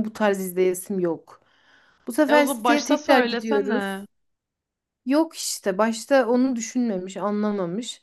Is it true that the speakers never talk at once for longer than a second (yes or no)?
no